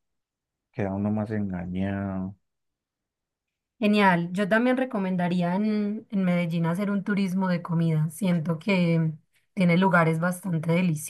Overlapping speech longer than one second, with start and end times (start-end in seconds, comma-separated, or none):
none